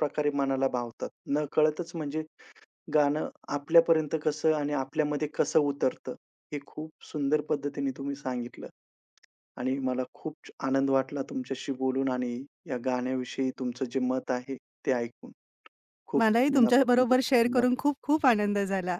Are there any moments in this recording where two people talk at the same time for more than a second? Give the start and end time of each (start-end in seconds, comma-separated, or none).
16.2-17.9